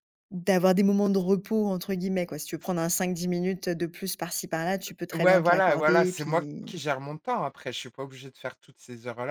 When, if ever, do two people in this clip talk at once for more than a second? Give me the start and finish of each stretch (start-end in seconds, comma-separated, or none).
5.1-6.7